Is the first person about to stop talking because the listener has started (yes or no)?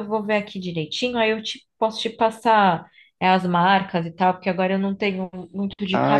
yes